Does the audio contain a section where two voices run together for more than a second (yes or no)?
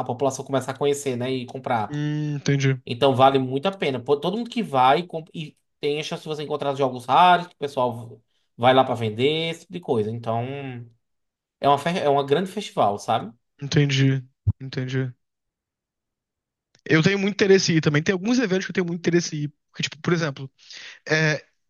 no